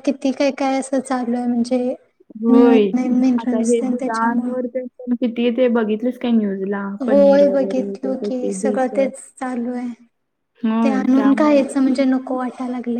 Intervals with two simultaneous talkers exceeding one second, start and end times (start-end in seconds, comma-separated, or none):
7.1-8.9